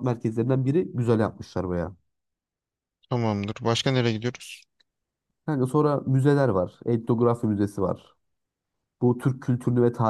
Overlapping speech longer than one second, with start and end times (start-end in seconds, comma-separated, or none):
none